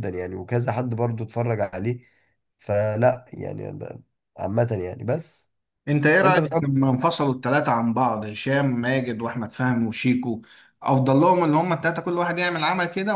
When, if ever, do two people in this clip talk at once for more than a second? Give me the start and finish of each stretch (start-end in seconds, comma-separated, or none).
none